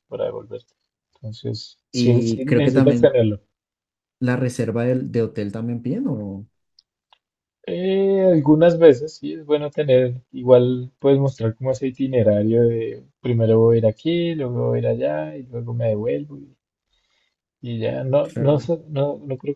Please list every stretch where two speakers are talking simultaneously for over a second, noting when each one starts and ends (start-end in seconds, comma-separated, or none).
1.9-3.1